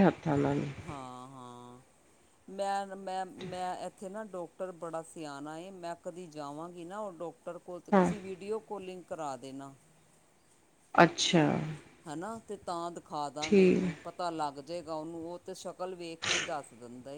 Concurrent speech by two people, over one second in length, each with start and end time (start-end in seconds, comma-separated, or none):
none